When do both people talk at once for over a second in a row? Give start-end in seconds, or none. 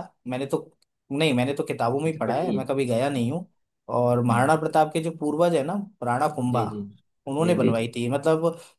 2.1-3.4